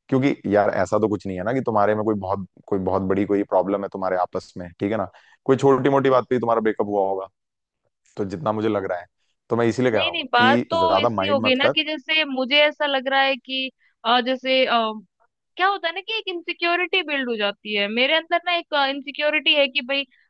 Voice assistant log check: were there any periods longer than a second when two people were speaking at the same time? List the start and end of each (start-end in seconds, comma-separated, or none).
9.9-11.7